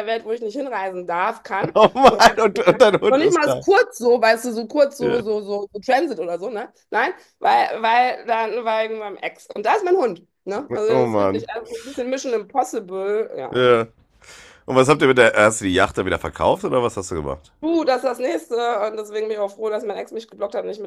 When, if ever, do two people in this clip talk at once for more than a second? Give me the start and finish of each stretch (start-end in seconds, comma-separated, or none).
2.1-3.6